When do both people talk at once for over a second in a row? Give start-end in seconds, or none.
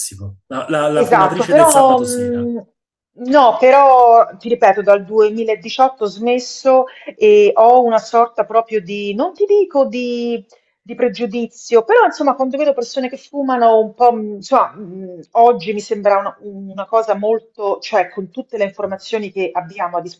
0.9-2.5